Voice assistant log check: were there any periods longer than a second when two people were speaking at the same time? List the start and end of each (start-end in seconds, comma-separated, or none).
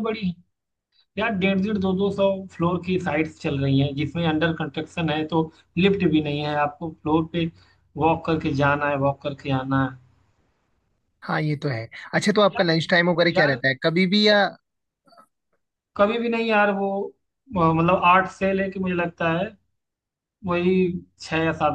none